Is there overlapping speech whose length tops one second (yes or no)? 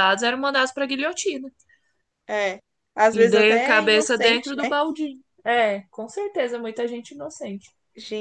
yes